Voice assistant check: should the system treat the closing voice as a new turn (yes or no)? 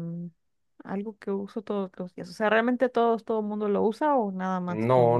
yes